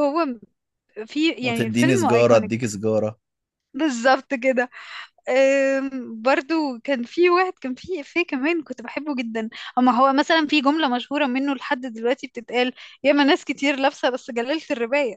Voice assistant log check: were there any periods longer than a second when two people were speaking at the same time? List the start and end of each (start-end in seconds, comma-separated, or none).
1.4-2.7